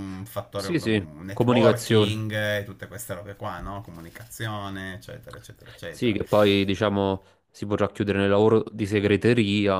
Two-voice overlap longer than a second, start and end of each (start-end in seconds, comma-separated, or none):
0.6-2.2